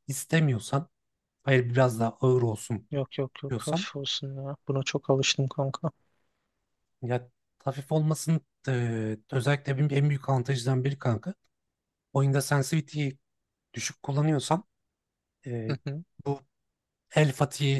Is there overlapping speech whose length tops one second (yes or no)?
no